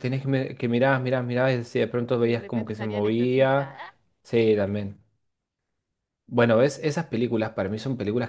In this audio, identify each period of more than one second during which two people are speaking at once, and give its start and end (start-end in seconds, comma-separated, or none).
2.2-3.8